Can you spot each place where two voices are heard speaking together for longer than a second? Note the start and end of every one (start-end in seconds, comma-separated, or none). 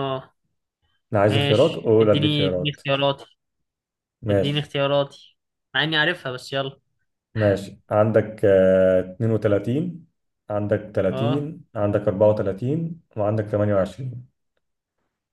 1.3-2.8